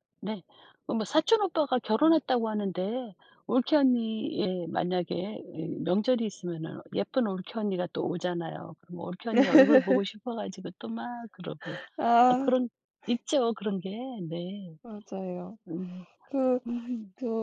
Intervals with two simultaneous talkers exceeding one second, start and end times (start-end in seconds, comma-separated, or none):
none